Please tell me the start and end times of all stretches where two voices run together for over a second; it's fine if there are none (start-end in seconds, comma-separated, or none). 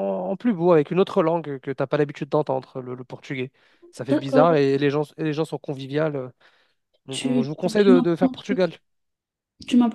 7.1-8.7